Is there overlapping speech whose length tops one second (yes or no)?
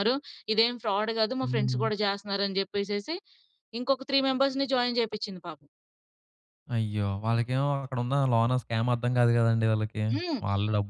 no